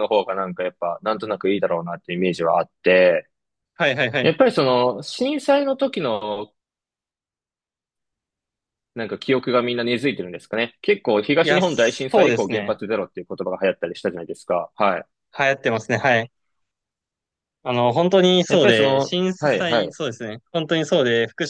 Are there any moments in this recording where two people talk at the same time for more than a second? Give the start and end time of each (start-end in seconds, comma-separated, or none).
11.4-12.8, 18.5-19.9